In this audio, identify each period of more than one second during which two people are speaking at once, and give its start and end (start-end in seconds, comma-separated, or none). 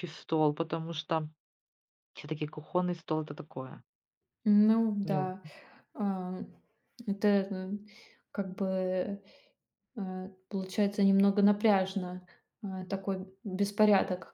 none